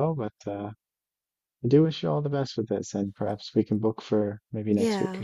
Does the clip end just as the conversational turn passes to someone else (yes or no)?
yes